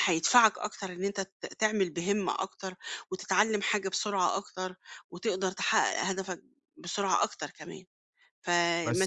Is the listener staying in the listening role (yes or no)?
yes